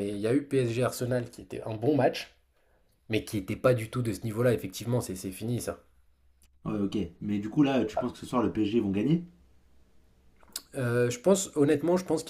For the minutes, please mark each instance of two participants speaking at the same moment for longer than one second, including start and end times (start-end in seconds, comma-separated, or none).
none